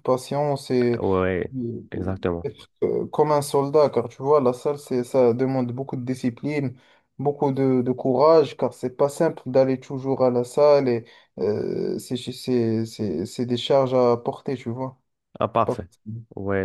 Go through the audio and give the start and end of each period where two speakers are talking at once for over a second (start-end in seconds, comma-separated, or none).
none